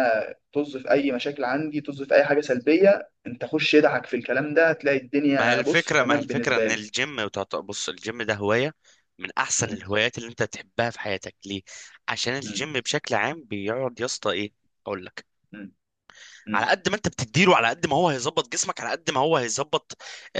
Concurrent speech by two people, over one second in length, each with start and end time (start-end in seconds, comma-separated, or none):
5.4-6.8